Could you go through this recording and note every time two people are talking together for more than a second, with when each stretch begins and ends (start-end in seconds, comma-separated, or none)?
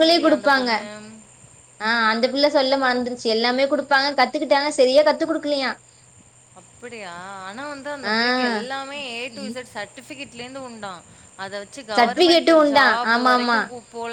12.0-13.6